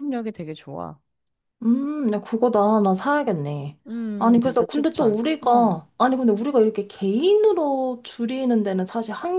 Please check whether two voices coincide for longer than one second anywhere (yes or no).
yes